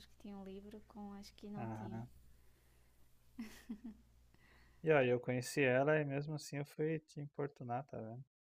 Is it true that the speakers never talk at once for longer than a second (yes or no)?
yes